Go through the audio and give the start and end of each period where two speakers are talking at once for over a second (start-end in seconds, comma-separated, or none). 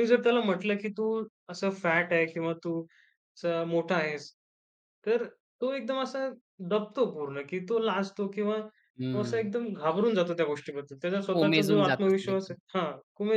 11.3-12.5